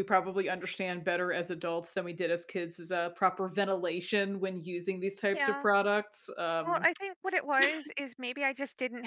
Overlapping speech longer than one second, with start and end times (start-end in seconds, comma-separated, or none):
none